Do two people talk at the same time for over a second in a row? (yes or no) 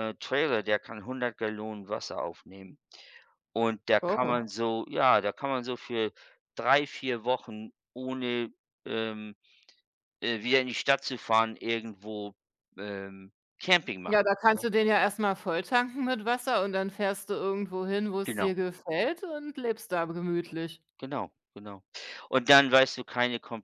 no